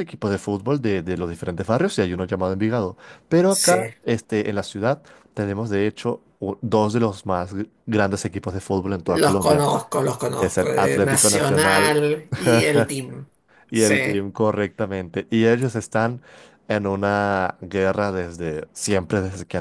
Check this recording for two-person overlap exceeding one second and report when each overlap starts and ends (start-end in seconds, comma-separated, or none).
10.4-12.0